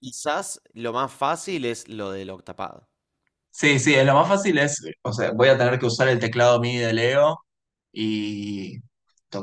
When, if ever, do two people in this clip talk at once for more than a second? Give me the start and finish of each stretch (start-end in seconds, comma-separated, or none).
none